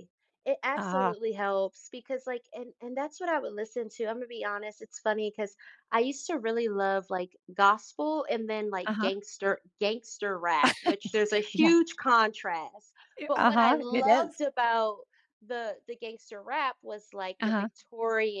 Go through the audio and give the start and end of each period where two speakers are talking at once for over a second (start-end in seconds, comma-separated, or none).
13.2-14.4